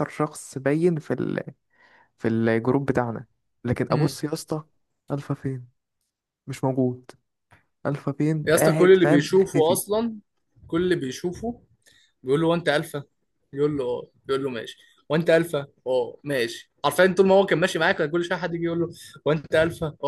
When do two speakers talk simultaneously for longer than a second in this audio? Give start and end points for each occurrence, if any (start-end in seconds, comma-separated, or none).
8.4-9.8